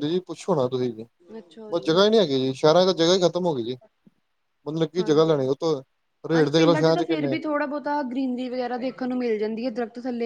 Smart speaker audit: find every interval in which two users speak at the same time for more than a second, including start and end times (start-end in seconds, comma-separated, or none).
none